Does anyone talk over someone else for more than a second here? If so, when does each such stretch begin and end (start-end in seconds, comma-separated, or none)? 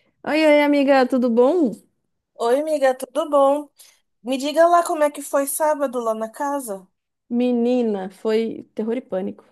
none